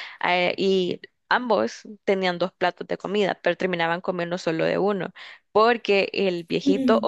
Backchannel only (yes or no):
yes